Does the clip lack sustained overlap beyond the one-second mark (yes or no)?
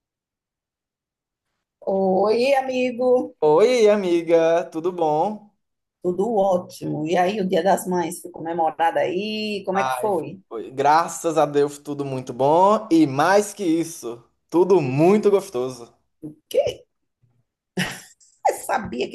yes